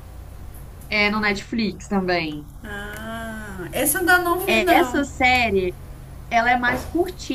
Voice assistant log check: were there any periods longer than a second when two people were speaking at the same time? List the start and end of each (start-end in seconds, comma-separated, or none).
none